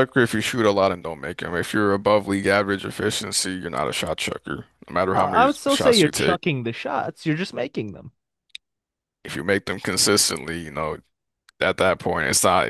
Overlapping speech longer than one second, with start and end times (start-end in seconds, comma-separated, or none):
5.1-6.4